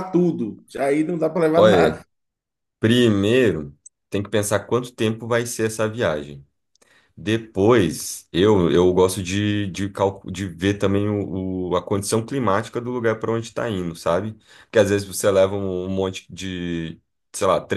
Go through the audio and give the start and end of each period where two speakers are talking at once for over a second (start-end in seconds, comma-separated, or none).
none